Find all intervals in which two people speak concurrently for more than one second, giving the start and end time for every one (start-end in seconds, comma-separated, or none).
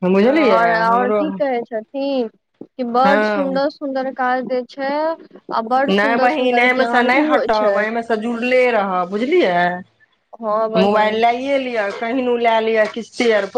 6.0-7.8